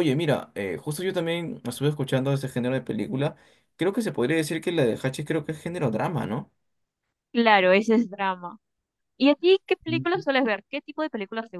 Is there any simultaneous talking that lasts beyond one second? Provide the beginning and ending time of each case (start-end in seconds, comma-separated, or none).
none